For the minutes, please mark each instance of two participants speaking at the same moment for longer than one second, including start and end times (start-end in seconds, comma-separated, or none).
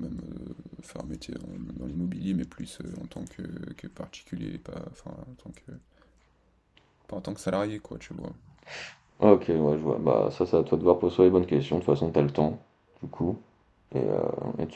none